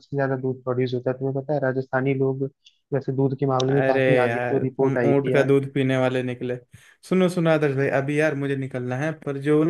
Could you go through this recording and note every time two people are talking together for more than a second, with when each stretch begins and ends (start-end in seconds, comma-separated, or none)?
3.7-5.5